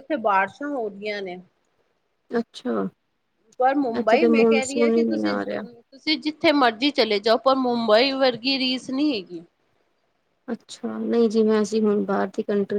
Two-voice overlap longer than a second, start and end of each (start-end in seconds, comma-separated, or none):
4.0-5.6